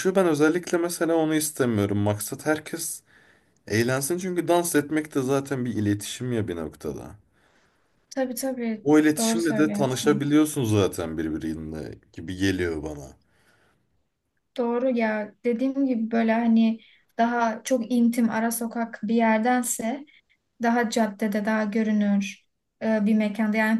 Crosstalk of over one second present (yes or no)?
yes